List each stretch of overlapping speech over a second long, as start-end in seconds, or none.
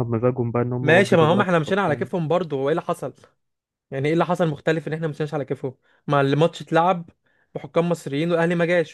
0.8-2.1